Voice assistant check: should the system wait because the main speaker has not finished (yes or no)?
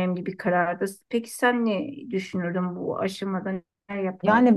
no